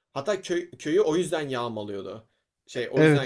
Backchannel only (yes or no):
no